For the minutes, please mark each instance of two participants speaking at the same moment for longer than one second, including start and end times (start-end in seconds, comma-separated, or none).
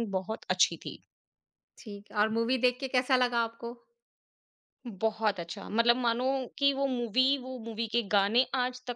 none